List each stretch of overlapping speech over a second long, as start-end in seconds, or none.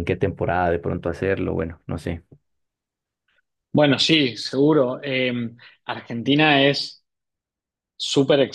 none